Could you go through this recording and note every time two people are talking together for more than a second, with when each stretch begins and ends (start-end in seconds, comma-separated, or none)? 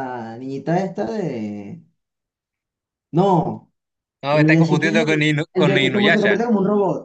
4.3-6.4